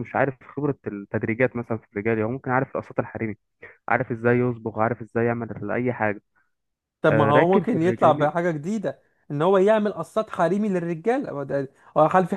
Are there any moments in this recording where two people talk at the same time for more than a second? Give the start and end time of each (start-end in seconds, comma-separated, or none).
7.1-8.3